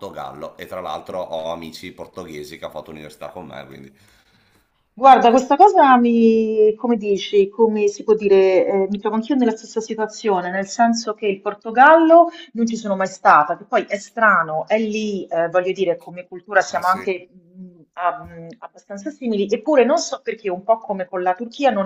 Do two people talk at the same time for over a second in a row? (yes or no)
no